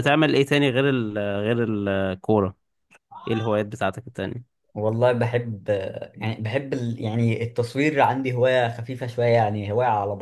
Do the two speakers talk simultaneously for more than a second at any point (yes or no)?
no